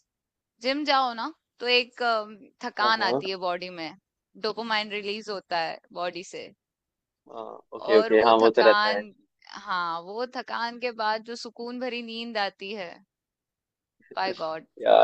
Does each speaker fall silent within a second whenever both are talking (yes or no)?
no